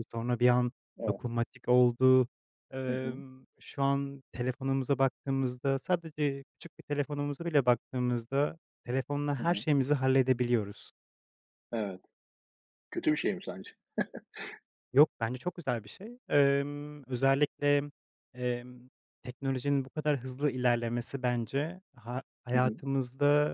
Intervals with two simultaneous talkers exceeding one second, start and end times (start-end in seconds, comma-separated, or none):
none